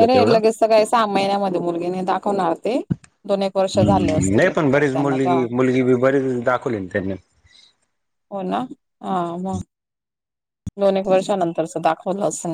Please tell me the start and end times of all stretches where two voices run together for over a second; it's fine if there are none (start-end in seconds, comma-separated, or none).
3.8-5.5